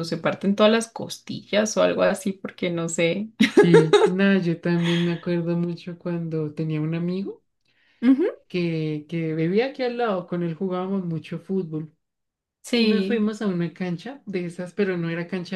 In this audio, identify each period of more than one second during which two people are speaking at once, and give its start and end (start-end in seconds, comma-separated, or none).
none